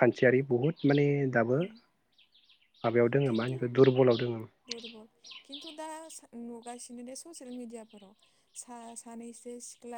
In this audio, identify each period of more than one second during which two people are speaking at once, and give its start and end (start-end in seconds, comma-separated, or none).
none